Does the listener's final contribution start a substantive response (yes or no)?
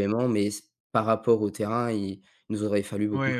yes